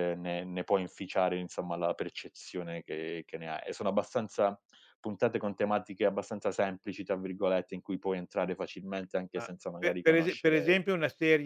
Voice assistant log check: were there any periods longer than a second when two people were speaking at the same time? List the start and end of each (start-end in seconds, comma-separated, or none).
9.3-10.8